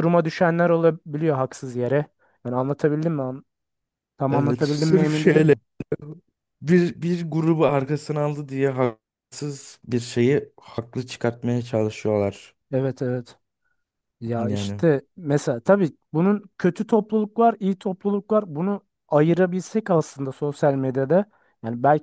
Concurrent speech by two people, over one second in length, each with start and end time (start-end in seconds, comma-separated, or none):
4.3-5.5